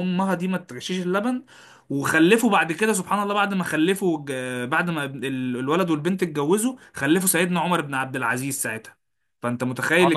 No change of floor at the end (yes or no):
no